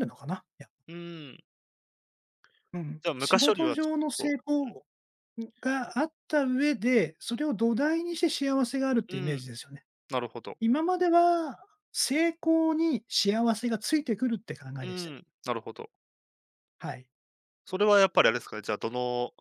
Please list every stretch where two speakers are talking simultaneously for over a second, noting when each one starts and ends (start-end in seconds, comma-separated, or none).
3.0-4.4